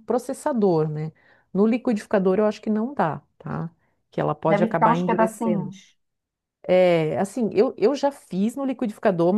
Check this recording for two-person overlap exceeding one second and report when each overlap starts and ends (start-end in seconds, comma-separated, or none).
4.4-5.7